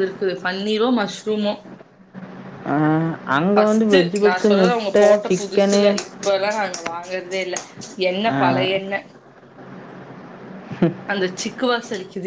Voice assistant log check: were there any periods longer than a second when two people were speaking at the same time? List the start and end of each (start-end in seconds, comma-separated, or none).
3.5-5.8